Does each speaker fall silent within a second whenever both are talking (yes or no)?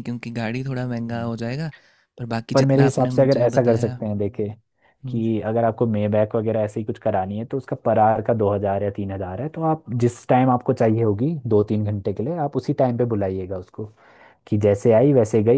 no